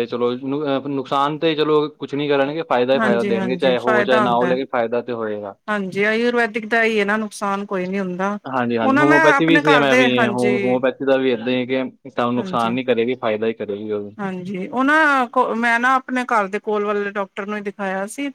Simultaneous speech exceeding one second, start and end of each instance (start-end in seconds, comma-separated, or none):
3.0-4.5, 8.8-10.6